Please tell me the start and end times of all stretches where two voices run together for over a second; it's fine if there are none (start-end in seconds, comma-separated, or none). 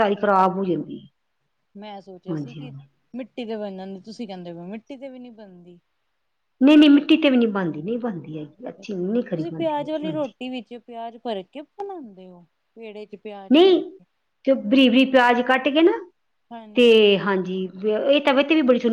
8.8-10.3